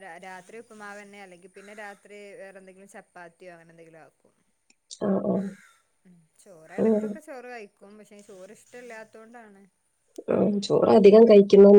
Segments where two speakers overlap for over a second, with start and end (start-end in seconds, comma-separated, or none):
none